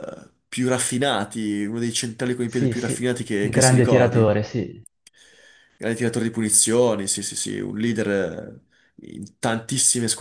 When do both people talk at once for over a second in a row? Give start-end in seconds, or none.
2.4-4.4